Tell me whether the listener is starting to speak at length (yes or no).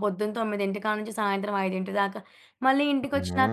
no